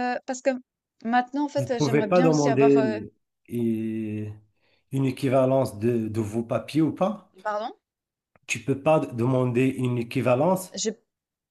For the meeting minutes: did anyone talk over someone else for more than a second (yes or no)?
yes